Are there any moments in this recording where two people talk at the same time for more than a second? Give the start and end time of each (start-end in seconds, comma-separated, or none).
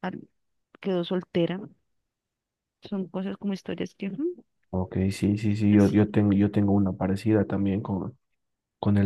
none